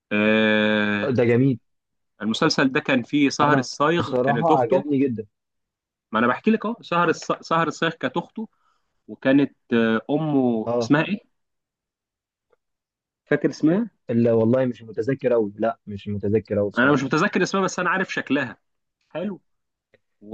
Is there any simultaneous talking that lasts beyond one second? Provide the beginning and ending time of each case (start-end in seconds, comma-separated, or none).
3.4-4.8